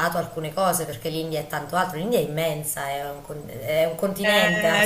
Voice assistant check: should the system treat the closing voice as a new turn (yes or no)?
yes